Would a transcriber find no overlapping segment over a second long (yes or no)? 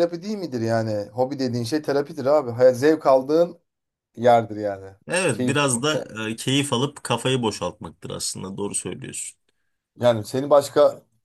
yes